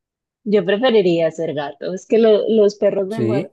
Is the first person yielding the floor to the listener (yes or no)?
no